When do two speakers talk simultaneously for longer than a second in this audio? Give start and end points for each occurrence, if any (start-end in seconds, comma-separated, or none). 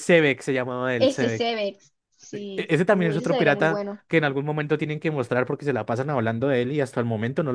2.3-4.0